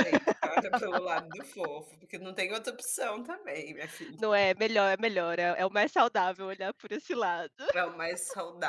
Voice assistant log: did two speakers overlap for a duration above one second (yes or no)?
no